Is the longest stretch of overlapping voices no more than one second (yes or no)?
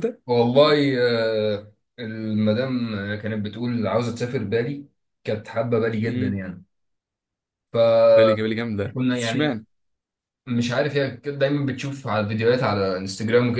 no